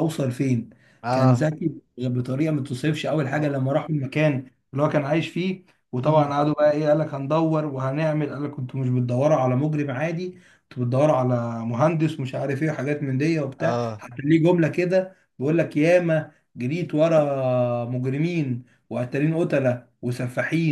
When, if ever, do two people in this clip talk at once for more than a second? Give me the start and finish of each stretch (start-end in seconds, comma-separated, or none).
none